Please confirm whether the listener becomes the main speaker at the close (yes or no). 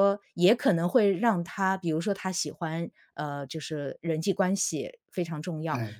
no